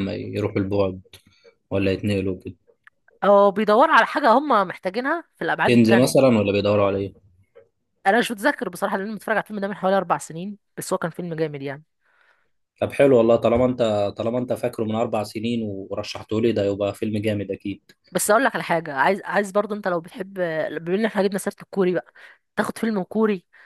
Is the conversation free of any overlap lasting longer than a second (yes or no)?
yes